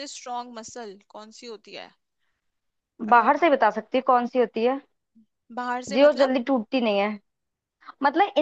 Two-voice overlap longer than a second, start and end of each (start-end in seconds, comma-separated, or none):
none